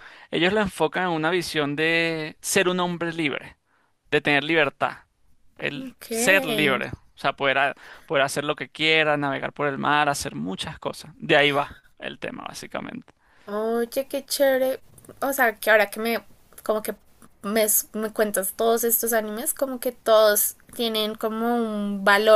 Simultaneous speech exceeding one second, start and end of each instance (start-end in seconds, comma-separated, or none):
none